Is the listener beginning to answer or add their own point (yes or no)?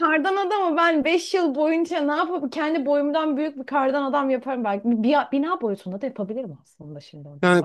yes